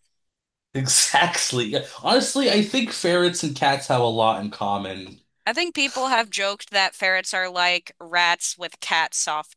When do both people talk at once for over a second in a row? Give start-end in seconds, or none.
none